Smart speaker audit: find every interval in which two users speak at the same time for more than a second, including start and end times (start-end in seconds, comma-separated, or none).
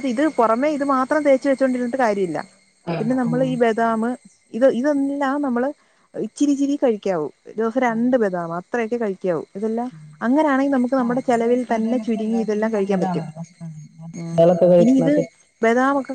11.0-13.2